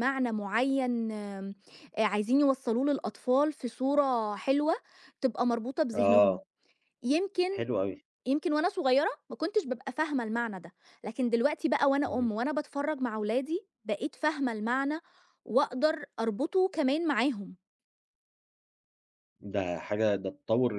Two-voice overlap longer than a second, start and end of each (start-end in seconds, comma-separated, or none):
none